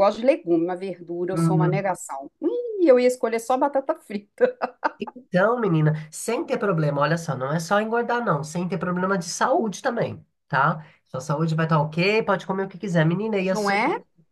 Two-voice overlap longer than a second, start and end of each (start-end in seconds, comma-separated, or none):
none